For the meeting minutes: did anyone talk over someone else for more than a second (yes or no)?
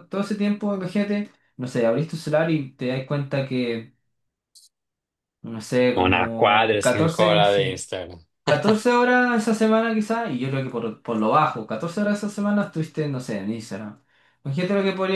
yes